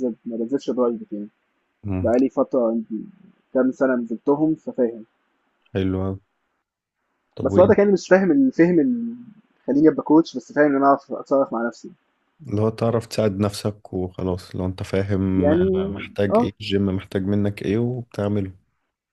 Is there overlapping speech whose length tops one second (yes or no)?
no